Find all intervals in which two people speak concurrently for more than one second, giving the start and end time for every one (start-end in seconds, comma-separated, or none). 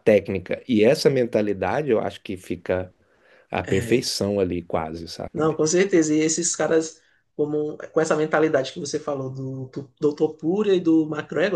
none